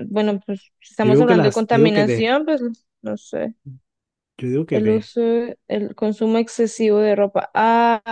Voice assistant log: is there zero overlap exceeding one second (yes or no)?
no